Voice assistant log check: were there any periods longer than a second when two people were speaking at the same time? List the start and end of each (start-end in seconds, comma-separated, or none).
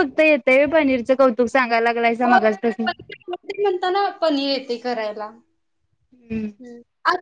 none